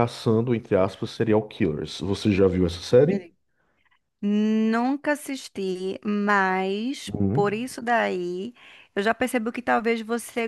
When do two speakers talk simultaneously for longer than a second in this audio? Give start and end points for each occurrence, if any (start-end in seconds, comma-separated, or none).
none